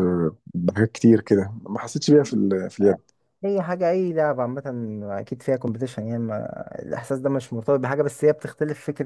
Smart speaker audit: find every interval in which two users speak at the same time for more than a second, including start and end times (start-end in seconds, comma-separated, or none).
none